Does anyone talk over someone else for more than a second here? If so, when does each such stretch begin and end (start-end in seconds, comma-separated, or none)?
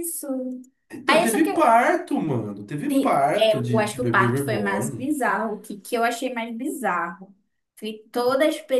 3.3-5.1